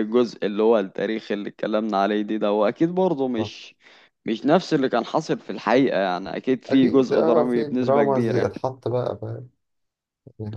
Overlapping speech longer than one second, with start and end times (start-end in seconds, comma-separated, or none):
6.7-8.5